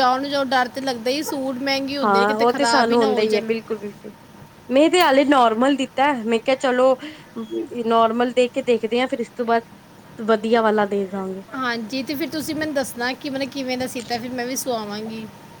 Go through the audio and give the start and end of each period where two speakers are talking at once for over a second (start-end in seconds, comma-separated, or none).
none